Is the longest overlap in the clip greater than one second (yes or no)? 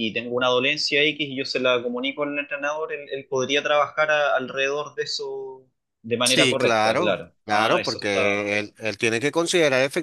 yes